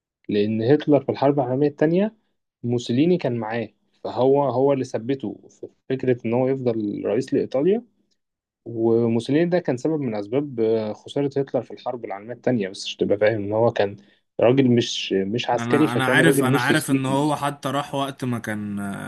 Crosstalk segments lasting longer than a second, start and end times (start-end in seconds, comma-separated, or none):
15.6-17.4